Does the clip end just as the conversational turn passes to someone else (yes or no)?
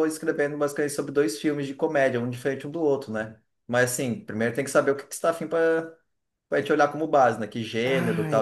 yes